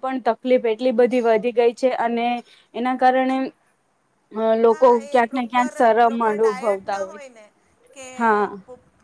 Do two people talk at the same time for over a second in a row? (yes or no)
yes